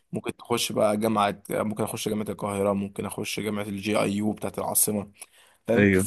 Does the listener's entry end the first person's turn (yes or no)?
no